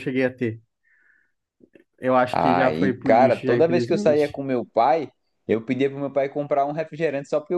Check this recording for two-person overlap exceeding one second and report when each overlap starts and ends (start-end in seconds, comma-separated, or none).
2.3-4.4